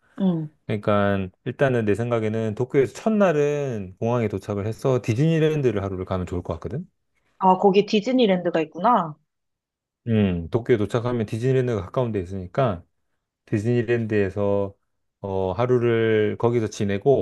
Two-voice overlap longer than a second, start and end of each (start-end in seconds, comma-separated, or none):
none